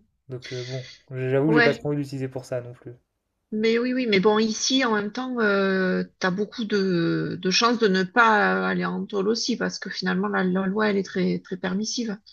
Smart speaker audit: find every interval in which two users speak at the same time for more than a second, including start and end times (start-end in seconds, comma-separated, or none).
none